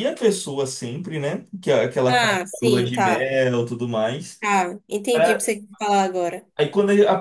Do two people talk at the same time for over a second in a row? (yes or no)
yes